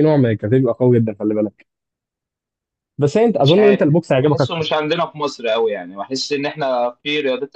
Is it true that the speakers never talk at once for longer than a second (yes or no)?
no